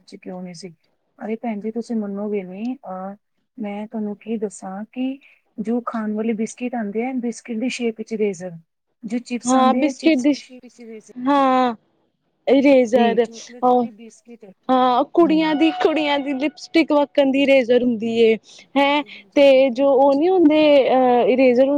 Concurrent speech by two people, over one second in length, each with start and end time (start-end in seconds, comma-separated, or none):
18.8-20.3